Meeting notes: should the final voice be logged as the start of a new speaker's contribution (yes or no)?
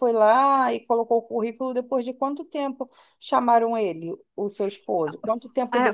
yes